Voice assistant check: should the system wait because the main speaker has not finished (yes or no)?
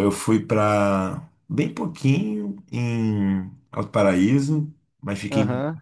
yes